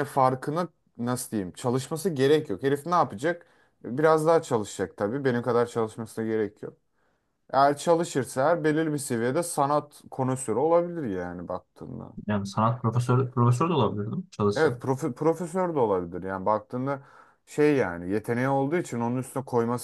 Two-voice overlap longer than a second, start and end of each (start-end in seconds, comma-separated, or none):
none